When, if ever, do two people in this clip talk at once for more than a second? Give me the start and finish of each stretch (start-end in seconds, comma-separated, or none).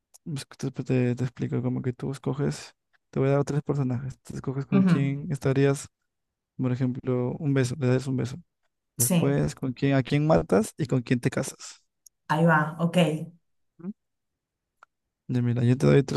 none